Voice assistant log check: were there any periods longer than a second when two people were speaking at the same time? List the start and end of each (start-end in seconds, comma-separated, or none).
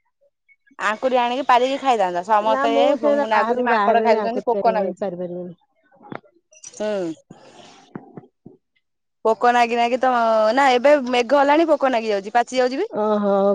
2.5-5.0